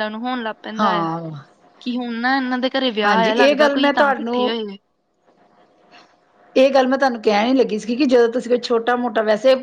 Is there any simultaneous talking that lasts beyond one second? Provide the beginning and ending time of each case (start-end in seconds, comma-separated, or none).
3.0-4.6